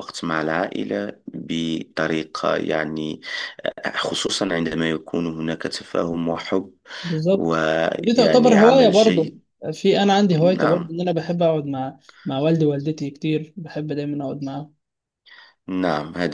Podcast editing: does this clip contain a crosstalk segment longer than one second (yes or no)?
yes